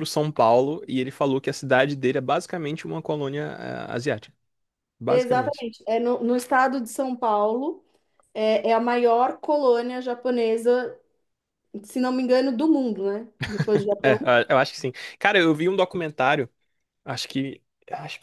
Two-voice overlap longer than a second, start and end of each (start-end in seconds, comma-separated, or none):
none